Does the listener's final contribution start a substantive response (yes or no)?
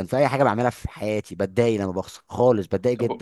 yes